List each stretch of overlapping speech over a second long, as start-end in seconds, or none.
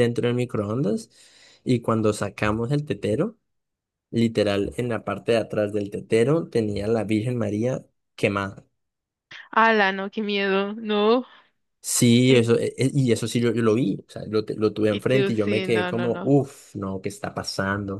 14.9-16.3